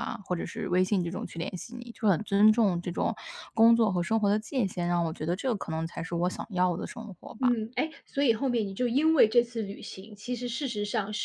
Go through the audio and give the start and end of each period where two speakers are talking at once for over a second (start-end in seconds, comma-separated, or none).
none